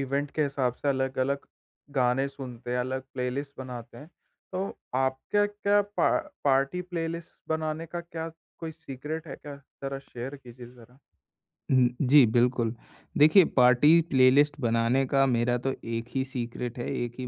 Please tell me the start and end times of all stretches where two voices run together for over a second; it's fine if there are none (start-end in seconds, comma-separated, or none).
none